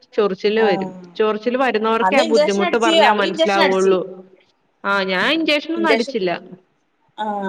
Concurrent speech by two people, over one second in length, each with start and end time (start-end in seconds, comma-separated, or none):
2.1-3.9